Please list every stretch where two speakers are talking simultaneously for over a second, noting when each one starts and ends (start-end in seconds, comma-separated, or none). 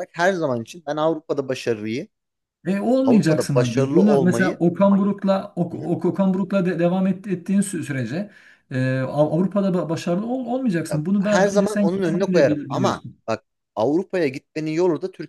3.0-4.6, 10.9-13.2